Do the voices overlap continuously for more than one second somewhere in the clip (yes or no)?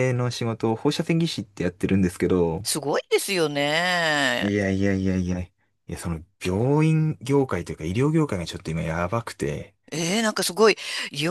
no